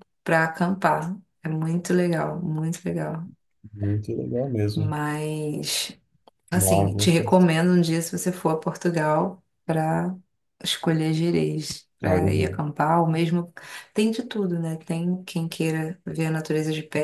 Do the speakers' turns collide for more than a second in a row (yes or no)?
no